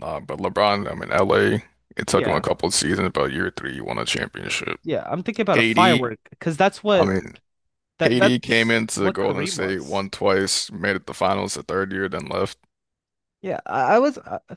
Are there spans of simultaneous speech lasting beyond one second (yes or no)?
yes